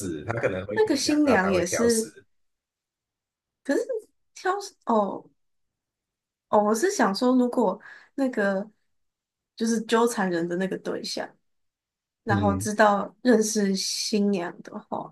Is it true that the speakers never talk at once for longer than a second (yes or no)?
no